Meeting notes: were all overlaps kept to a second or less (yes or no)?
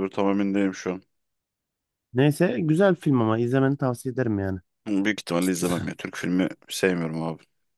yes